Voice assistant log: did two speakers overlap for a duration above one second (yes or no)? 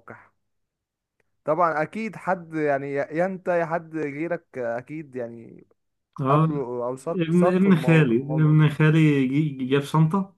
yes